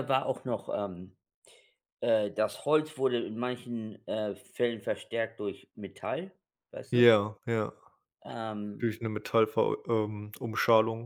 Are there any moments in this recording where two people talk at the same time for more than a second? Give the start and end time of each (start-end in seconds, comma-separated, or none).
none